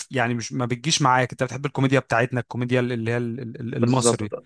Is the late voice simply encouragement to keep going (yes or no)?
no